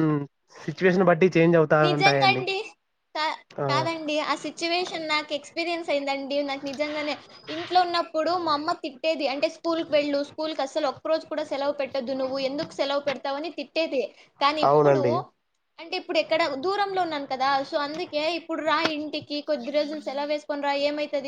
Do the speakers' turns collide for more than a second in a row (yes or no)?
no